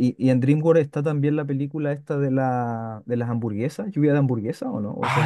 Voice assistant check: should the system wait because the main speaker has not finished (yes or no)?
no